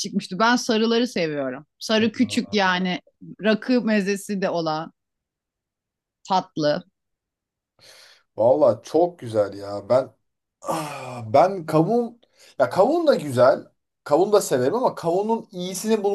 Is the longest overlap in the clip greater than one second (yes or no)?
no